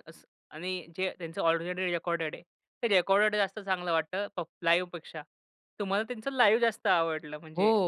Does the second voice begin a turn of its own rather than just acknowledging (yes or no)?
yes